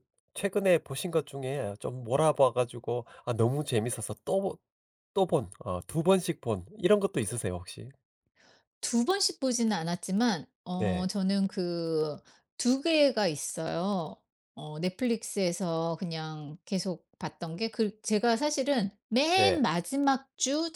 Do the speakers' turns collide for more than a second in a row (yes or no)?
no